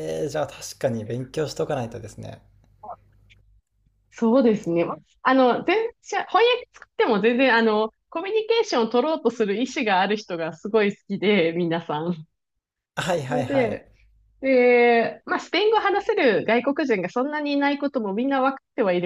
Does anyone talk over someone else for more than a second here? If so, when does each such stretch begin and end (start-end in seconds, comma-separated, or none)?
none